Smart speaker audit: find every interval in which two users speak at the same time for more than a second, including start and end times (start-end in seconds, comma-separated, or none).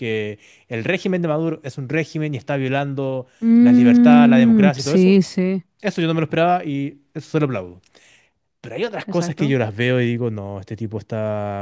3.4-5.2